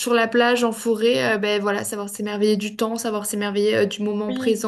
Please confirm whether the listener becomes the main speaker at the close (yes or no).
yes